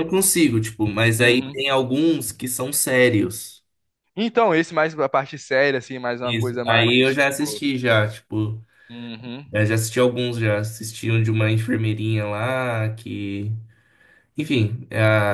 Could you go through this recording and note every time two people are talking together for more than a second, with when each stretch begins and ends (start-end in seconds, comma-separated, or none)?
6.2-7.7